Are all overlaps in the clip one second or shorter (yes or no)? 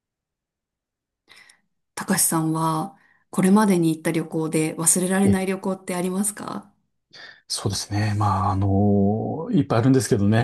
yes